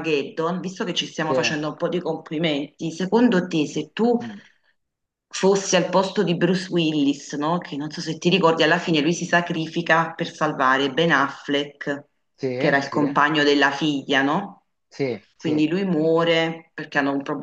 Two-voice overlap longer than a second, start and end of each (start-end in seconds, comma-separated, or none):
none